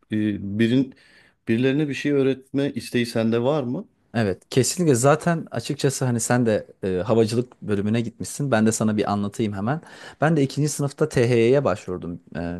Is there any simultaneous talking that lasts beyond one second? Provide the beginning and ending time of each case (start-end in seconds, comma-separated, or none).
none